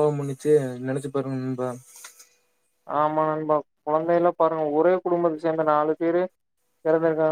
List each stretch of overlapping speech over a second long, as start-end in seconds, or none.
none